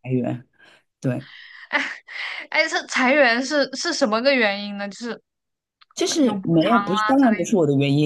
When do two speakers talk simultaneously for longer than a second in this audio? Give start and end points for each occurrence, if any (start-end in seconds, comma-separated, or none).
6.2-7.5